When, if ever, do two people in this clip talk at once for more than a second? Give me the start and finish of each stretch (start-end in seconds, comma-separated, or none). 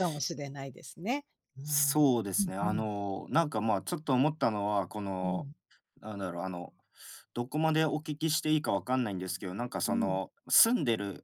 none